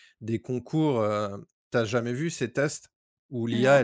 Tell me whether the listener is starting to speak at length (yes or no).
no